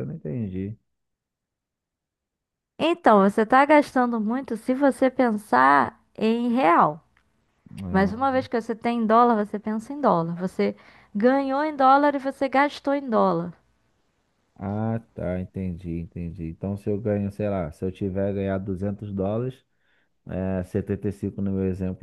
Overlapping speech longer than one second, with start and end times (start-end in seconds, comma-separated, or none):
none